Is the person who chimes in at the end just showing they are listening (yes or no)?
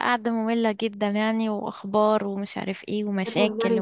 no